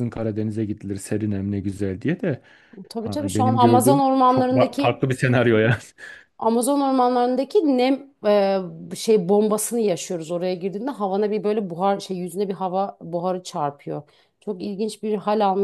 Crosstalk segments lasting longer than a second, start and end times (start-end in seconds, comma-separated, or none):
3.0-5.0